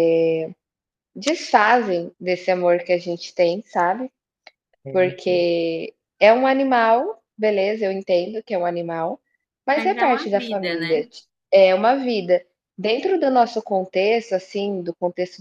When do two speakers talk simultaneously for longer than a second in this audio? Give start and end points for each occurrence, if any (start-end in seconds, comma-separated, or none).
9.7-11.0